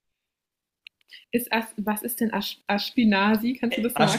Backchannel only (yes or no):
no